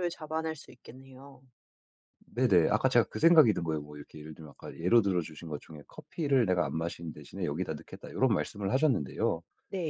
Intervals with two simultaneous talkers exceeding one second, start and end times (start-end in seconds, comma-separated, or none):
none